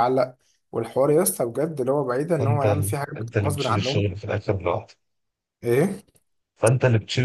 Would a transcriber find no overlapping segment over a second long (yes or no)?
no